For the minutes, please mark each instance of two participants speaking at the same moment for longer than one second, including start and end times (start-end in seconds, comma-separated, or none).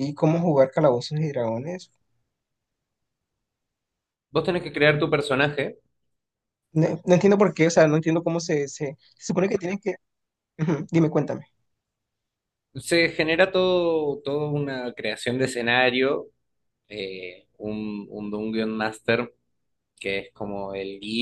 none